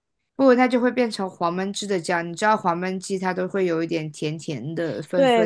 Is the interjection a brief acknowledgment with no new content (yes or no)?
no